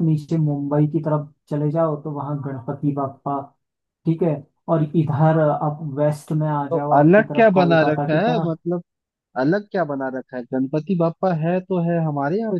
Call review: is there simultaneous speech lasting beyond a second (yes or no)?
yes